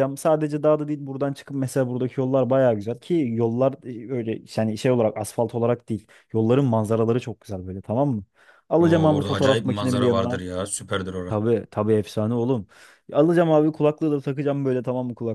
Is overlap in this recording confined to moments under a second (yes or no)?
no